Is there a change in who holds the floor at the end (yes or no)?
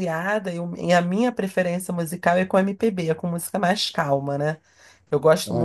no